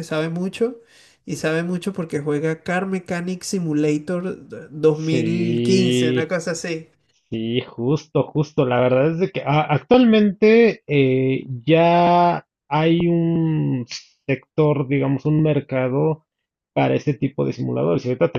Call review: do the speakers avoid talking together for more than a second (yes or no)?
no